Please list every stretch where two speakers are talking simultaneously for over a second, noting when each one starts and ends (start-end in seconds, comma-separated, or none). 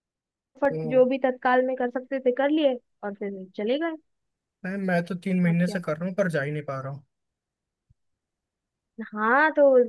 none